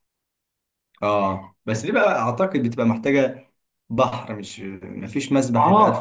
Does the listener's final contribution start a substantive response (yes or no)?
yes